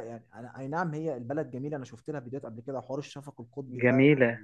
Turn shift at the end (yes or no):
no